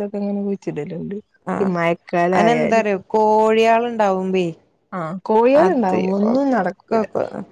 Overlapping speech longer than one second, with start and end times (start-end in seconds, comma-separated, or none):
5.6-7.0